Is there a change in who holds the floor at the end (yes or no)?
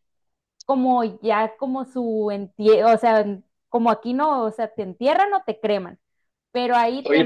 yes